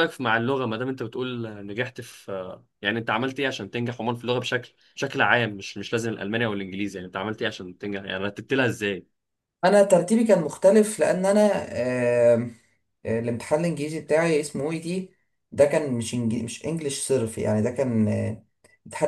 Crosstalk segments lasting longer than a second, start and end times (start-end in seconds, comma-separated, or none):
none